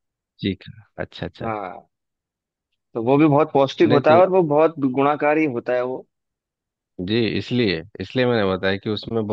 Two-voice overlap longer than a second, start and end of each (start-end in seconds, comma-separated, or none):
none